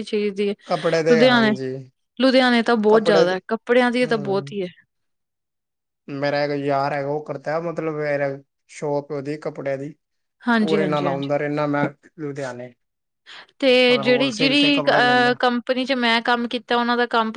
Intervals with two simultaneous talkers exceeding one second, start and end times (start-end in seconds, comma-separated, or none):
13.9-15.4